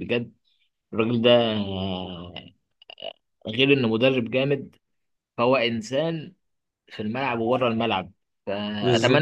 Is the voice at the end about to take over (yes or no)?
no